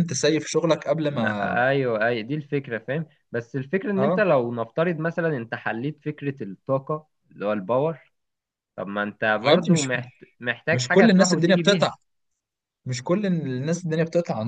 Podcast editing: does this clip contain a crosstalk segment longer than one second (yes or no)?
yes